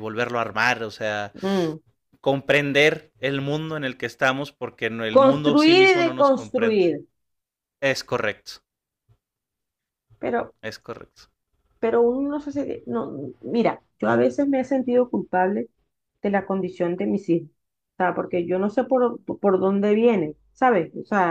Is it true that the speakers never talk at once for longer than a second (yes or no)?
no